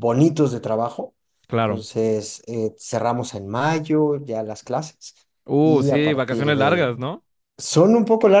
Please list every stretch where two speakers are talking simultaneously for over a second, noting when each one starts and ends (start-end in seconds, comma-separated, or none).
5.6-6.8